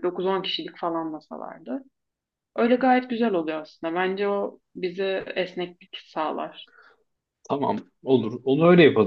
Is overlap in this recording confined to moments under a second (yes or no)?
yes